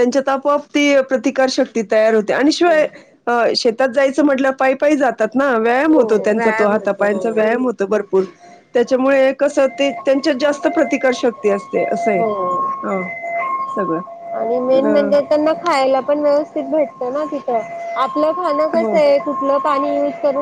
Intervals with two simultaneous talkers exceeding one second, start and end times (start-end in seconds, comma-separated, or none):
5.9-7.6